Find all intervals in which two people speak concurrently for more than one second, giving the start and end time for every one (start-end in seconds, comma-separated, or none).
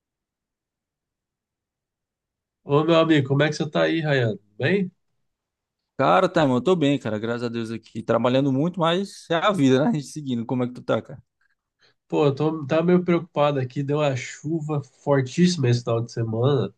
none